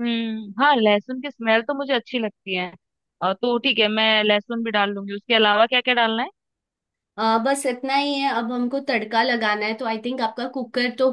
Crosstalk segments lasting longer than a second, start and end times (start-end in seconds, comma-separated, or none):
none